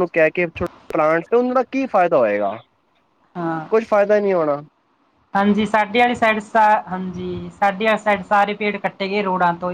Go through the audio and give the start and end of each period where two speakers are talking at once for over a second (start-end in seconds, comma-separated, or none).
none